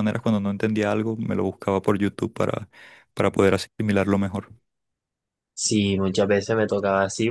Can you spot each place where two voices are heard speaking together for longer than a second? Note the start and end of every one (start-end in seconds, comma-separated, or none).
none